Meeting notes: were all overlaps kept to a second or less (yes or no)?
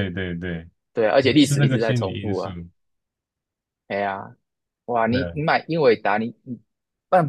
no